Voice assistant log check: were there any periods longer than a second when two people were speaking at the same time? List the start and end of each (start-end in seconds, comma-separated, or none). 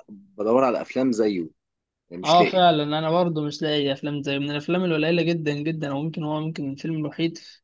none